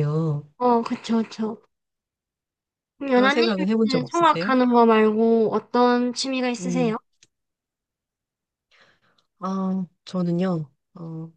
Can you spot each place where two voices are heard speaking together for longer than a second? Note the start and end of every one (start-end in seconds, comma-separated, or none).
3.1-4.5